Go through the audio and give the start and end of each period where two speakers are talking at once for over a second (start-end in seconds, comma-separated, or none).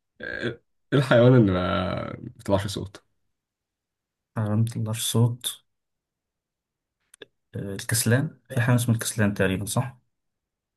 none